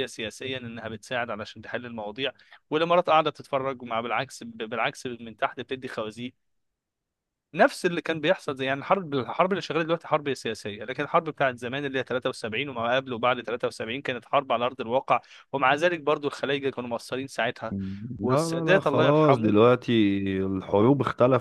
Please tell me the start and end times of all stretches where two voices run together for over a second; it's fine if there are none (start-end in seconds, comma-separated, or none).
18.2-19.5